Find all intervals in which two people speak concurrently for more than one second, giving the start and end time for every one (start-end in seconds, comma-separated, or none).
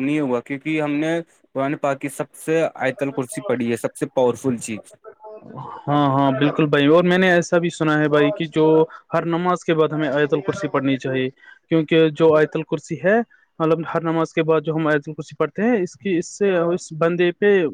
none